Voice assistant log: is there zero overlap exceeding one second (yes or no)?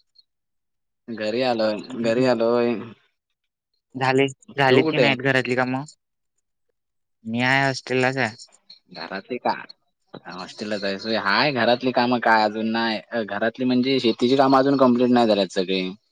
yes